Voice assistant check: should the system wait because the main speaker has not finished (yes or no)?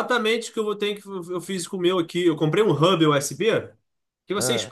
yes